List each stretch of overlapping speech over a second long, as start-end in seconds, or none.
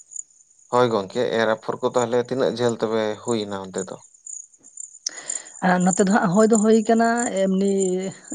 none